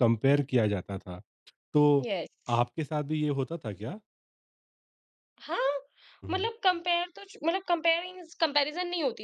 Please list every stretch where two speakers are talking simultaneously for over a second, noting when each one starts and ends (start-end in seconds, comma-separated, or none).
none